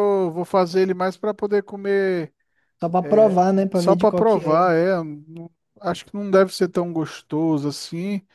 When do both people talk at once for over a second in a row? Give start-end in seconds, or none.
3.0-4.6